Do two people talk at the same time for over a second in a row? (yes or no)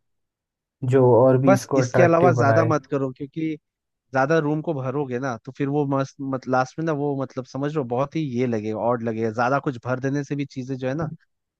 yes